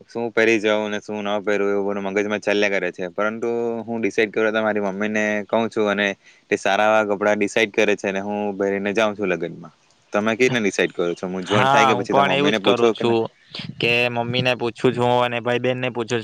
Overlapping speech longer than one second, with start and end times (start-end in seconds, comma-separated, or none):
11.6-13.1